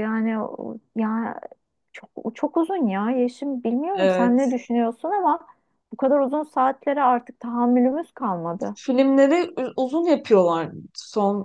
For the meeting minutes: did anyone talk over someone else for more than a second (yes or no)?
no